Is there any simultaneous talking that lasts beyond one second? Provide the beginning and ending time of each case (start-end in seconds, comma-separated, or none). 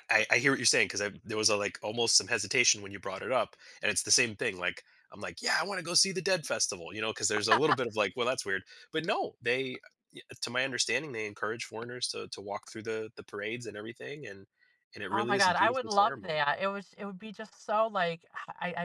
15.1-16.4